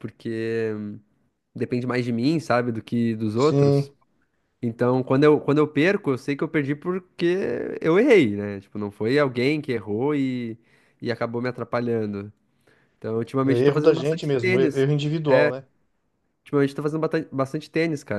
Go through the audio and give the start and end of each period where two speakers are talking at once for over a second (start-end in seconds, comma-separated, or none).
13.4-14.8